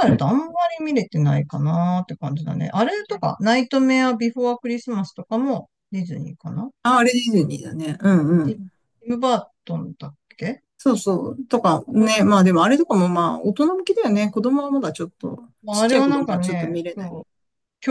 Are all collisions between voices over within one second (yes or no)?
no